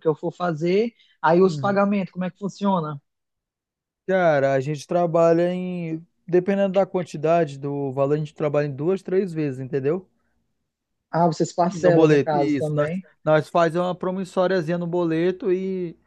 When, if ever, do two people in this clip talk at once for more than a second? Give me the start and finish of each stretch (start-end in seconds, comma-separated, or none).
11.6-13.1